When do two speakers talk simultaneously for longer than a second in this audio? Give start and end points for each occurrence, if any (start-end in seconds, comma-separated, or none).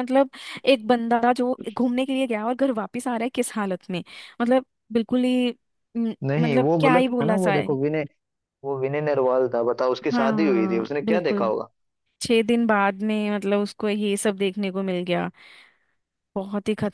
6.3-7.8, 10.1-11.5